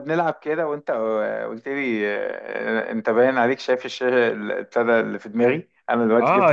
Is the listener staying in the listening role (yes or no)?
no